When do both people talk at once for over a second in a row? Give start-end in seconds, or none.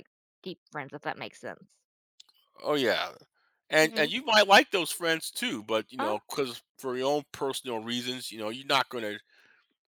none